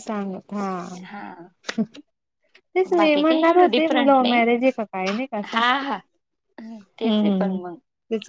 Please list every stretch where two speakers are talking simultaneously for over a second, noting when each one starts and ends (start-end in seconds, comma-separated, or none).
3.0-4.5